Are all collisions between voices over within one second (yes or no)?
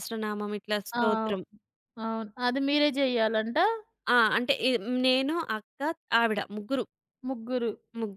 yes